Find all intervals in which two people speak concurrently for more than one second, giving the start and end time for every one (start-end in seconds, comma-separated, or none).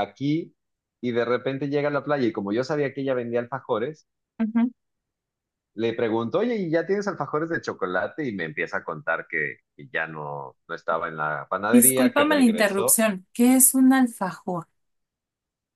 11.7-13.0